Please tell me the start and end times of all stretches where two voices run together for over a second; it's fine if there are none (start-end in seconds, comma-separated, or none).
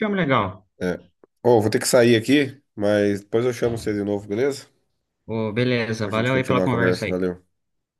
6.0-7.2